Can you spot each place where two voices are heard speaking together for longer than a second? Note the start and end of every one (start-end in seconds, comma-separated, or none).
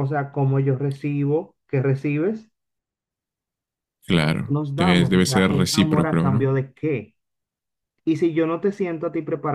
4.2-6.6